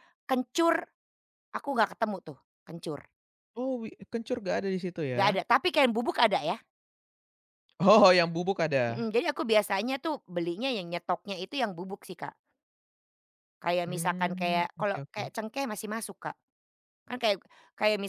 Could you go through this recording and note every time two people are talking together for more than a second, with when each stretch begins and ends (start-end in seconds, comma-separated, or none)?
13.9-15.3